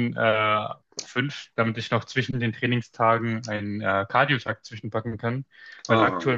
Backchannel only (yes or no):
yes